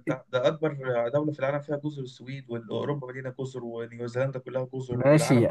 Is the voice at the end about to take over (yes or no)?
yes